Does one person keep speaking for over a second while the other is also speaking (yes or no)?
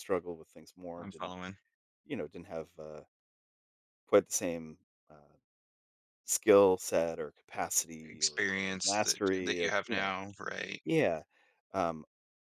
yes